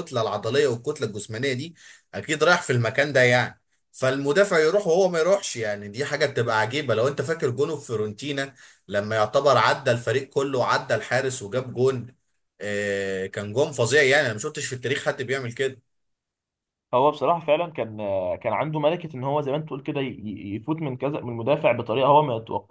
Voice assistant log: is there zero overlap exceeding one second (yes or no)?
yes